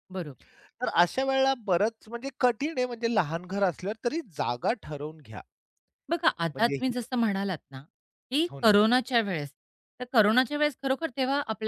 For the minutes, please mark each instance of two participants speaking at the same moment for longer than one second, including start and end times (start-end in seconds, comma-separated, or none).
none